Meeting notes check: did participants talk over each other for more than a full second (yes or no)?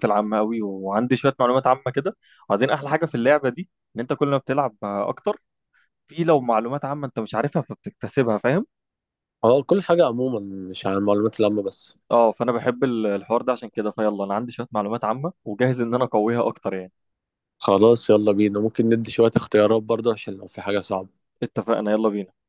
no